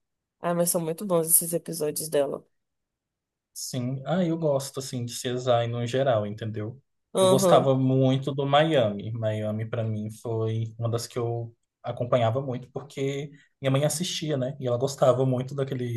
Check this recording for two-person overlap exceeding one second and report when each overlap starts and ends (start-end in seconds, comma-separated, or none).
none